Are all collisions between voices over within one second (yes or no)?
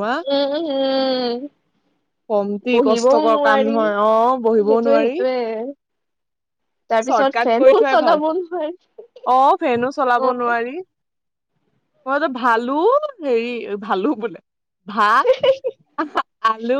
no